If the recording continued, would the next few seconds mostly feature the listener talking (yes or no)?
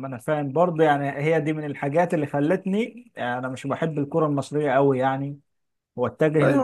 yes